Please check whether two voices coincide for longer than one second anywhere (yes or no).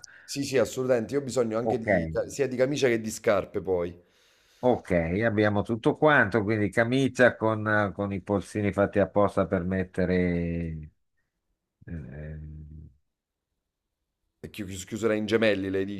no